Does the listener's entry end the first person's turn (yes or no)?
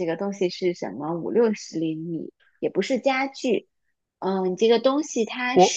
yes